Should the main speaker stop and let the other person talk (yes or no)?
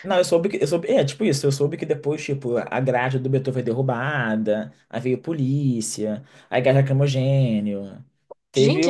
no